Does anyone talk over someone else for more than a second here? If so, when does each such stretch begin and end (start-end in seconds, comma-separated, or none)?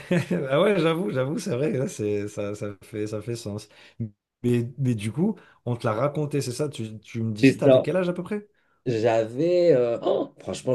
none